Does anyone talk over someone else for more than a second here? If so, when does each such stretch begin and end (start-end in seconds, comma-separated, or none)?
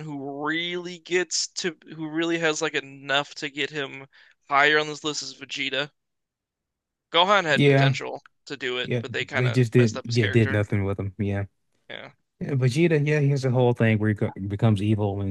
8.8-10.7